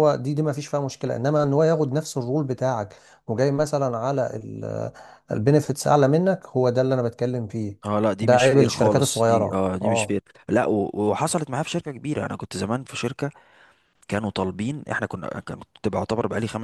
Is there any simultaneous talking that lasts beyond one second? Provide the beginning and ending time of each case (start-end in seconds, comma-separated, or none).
8.2-10.2